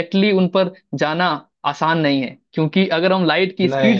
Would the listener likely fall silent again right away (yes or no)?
yes